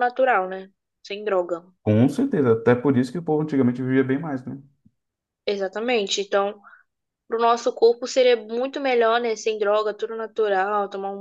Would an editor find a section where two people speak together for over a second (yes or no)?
no